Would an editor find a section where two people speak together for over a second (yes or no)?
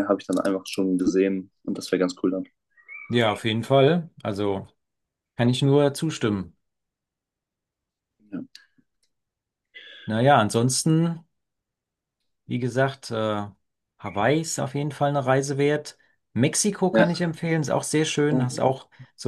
no